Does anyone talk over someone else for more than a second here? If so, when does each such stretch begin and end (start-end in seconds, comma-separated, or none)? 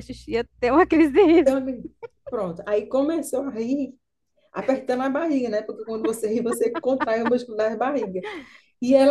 none